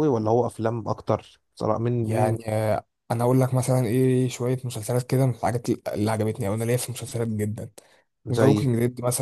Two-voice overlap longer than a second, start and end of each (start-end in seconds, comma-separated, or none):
none